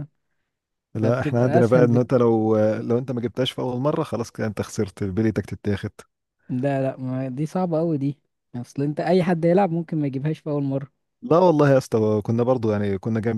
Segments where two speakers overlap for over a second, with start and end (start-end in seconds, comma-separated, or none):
0.9-2.2